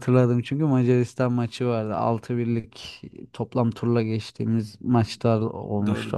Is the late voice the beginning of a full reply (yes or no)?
yes